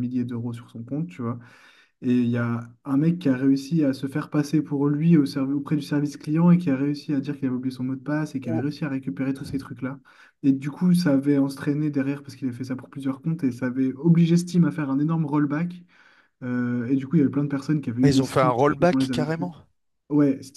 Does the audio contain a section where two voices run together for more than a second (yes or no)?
yes